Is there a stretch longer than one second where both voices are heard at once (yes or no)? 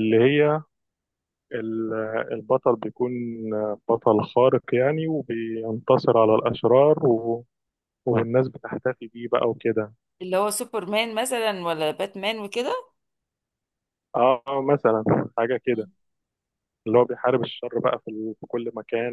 no